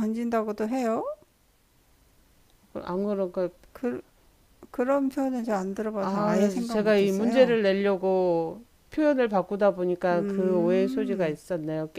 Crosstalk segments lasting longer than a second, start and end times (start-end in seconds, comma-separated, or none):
6.0-7.6, 10.1-11.4